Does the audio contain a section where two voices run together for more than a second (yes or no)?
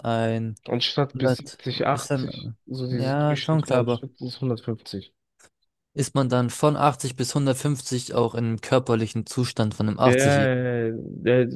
yes